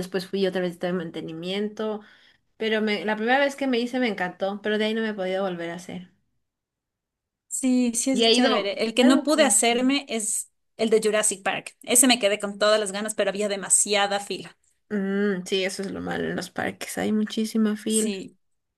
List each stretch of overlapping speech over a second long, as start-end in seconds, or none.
8.1-10.0